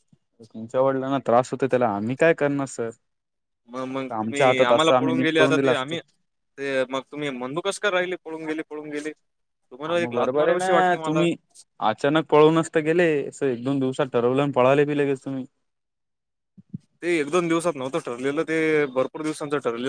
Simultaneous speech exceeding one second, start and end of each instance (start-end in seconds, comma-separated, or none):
4.2-6.0, 9.9-11.2